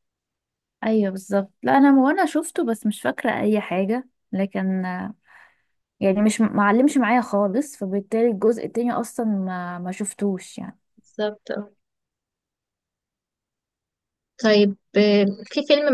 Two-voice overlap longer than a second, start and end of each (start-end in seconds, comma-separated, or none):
none